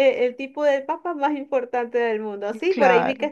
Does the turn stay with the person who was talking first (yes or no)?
yes